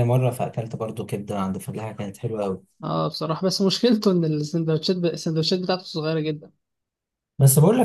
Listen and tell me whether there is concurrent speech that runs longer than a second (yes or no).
no